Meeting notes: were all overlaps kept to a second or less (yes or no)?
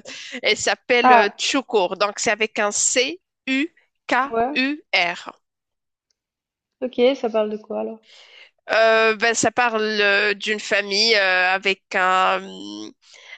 yes